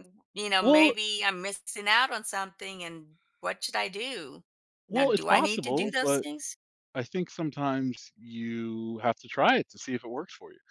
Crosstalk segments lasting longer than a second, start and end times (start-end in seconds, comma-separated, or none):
4.9-6.2